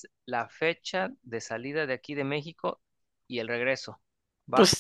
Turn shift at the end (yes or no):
yes